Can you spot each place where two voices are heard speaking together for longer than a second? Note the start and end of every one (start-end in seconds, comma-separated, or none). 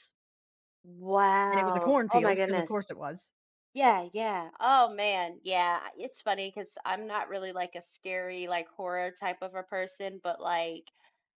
1.5-2.7